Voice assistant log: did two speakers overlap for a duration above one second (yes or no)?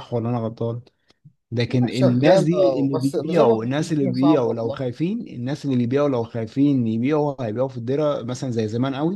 yes